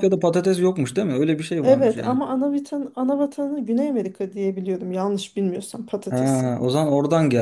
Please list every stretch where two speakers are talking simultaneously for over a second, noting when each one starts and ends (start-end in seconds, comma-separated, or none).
none